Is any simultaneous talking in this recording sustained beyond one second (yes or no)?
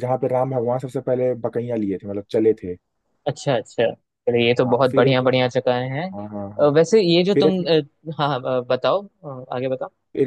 no